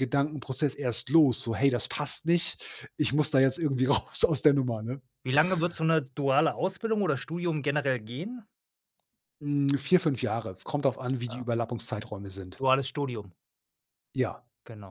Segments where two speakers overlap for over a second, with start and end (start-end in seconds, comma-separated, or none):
none